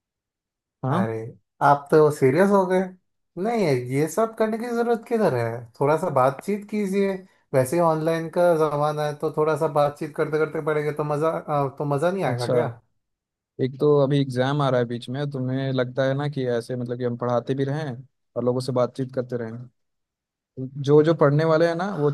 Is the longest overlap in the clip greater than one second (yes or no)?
no